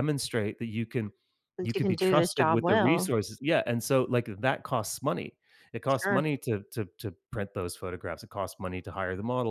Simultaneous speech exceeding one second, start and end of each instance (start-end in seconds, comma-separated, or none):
1.6-3.1